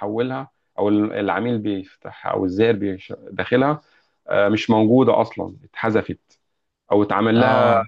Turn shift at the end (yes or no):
no